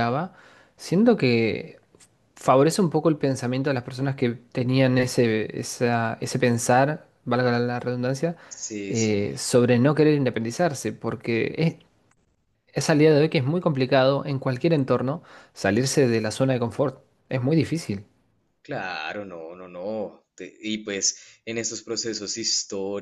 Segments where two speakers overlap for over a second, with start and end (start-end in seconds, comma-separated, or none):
none